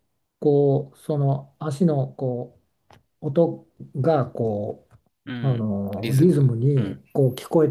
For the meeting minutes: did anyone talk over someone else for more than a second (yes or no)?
yes